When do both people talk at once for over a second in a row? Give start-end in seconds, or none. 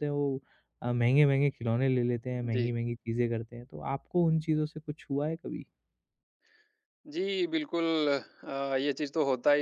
none